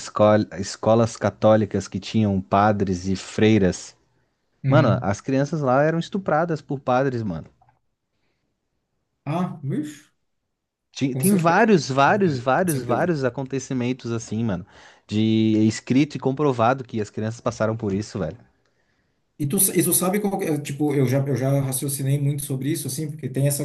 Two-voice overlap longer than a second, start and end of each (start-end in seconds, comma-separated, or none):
11.1-13.1